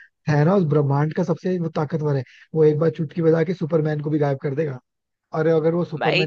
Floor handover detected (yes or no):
no